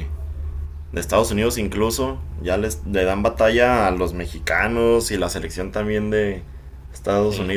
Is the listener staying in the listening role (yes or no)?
yes